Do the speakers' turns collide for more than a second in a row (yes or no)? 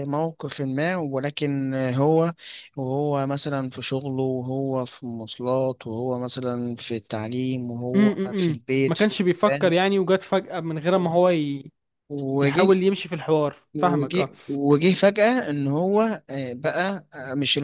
yes